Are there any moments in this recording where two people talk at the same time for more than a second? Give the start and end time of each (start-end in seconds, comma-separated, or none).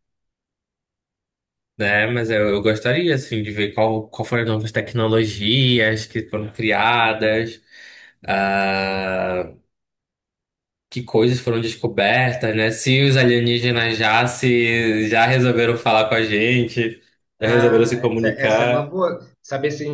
17.4-18.9